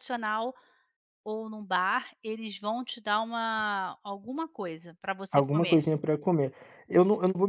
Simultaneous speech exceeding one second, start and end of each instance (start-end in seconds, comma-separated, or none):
none